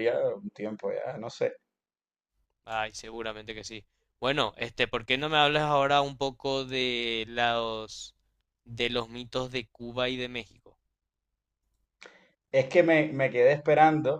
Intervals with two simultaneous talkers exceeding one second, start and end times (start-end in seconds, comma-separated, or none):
none